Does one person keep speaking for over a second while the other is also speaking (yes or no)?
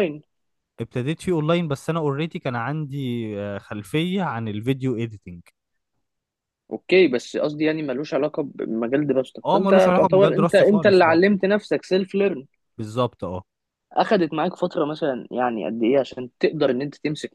yes